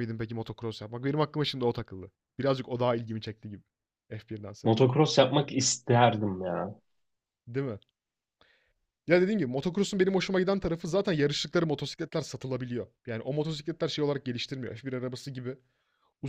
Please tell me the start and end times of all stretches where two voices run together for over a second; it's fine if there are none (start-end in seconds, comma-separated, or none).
none